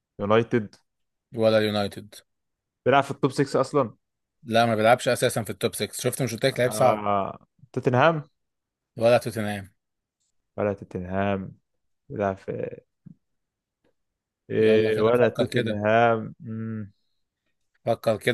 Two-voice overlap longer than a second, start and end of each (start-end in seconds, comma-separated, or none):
14.6-15.8